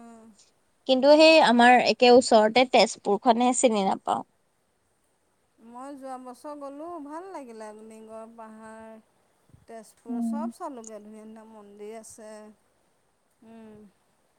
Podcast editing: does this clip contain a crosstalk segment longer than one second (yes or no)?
no